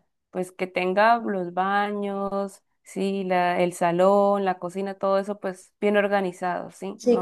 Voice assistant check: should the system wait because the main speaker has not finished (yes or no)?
no